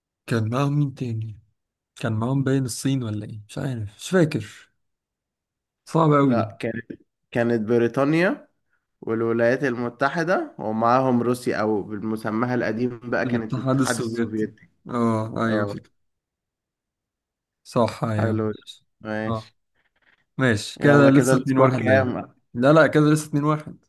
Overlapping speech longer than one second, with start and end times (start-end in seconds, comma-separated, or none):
13.3-14.5, 20.8-22.1